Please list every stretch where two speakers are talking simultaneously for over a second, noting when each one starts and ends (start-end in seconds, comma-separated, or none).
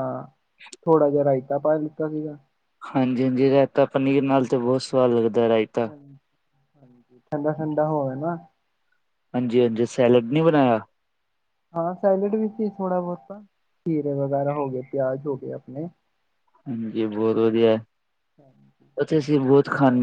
none